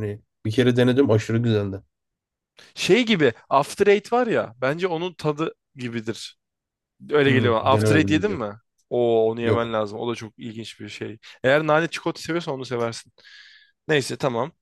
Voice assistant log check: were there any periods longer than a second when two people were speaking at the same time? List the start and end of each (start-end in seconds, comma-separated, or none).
7.3-8.5